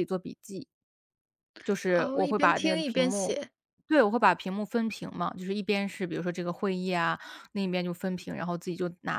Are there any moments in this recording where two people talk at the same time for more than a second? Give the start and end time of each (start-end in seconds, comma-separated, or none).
1.9-3.4